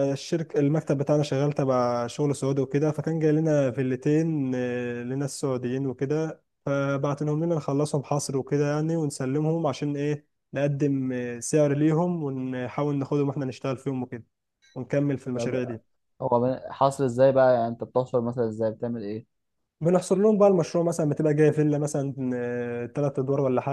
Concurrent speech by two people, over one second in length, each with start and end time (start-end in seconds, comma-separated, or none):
none